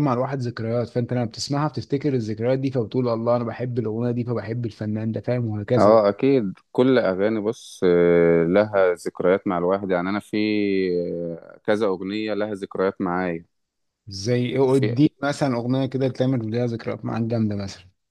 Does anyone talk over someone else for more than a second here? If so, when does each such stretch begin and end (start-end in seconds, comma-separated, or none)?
none